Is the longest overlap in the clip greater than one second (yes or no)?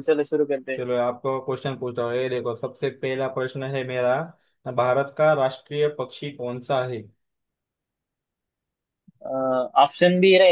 no